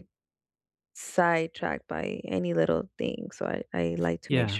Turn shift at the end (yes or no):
yes